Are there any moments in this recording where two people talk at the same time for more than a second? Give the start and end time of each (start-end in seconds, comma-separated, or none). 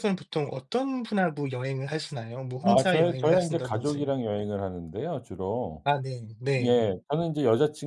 2.6-4.1